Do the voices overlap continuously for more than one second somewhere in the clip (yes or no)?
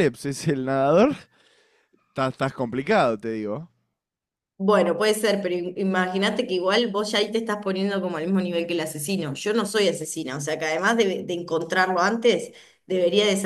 no